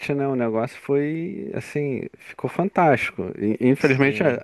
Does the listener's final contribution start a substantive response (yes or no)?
no